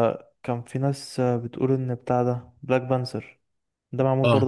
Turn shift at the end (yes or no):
no